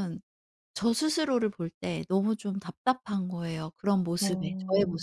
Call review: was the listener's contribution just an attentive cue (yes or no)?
no